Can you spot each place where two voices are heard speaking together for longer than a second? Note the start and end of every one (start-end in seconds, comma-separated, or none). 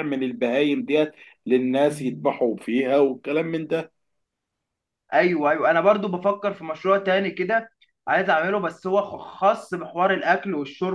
none